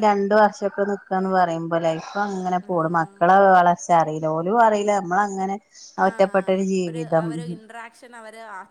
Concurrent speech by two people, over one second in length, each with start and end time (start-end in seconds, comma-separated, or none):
none